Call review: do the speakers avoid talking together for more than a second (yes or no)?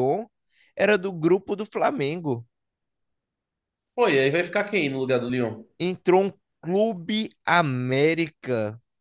yes